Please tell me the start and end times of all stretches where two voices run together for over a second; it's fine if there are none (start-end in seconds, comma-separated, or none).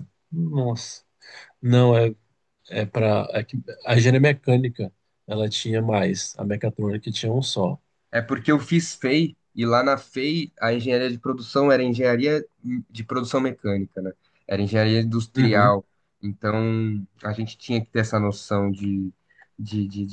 none